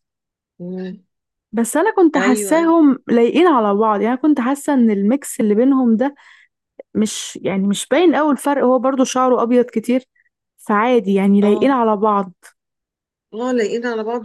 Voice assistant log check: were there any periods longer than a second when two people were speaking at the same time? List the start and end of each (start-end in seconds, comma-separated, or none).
none